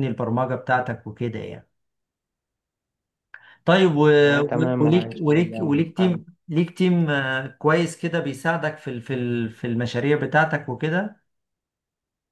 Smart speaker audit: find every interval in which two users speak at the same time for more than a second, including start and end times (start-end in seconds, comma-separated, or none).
4.4-5.8